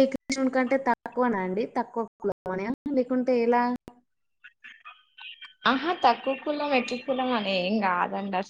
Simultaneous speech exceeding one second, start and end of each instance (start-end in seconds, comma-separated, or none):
none